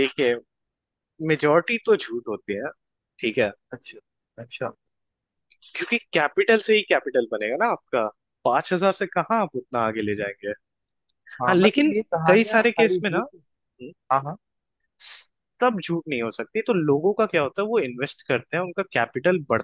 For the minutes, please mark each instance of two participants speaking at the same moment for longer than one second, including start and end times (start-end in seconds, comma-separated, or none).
11.5-13.4